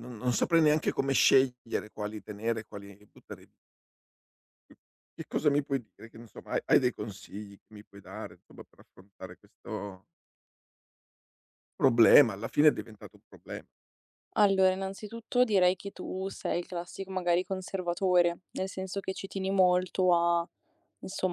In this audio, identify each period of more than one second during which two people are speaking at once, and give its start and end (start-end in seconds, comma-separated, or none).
none